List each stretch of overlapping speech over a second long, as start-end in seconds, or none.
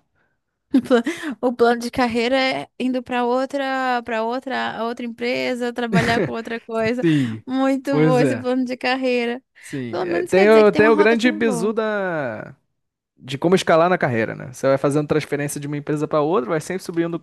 9.9-11.7